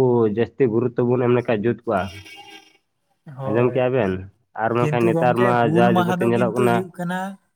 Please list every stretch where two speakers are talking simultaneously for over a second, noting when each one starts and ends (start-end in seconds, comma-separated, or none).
4.8-6.9